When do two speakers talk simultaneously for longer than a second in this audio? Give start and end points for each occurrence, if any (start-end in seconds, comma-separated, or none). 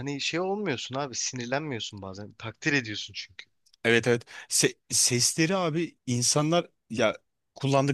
none